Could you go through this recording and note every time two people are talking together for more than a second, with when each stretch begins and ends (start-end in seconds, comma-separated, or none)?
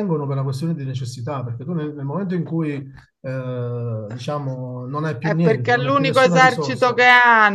5.2-7.0